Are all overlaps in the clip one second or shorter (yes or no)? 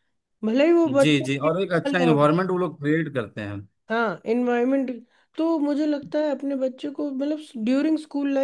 no